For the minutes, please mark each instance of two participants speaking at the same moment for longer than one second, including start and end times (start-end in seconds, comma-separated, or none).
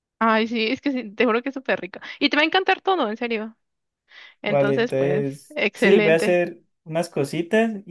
4.5-6.4